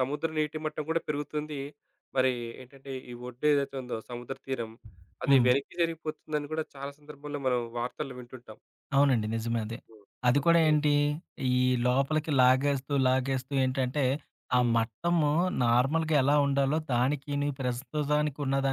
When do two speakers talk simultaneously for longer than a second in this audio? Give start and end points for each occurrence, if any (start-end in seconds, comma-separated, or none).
none